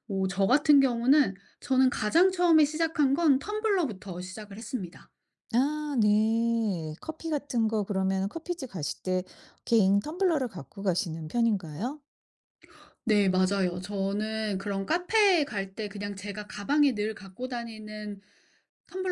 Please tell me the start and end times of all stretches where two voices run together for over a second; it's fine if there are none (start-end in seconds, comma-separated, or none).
none